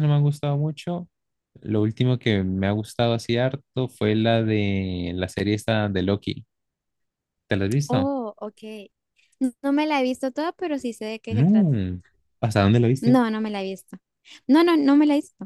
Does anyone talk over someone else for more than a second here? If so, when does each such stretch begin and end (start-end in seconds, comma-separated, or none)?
none